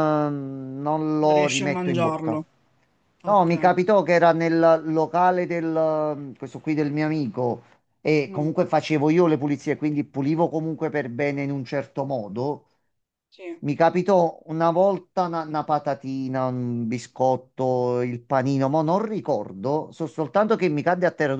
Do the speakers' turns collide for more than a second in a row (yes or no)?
yes